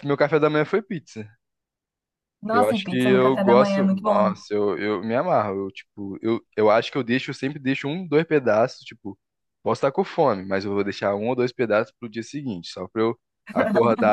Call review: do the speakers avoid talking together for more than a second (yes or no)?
no